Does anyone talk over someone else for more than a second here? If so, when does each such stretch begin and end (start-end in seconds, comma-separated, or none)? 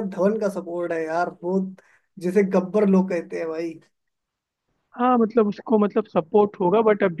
none